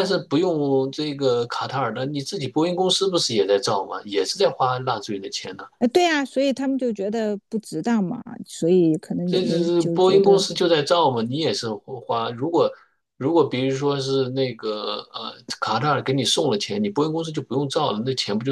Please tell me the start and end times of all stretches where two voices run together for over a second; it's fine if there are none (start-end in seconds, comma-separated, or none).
9.2-10.4